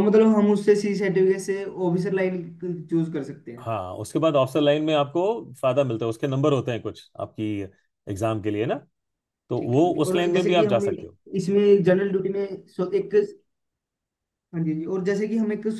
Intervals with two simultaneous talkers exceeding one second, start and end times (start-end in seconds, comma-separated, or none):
9.6-11.2